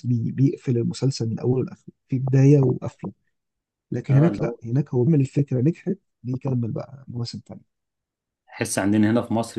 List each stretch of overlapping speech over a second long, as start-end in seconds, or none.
none